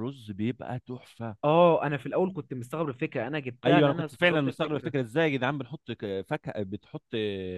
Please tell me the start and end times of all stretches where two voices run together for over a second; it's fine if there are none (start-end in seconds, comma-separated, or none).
3.6-4.9